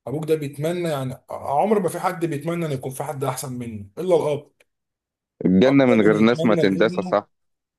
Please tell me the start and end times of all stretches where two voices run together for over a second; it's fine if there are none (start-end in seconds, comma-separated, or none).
5.7-7.2